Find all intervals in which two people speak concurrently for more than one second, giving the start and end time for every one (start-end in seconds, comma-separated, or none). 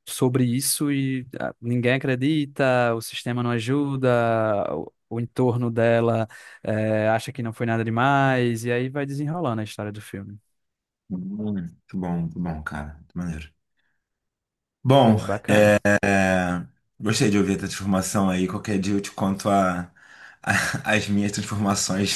none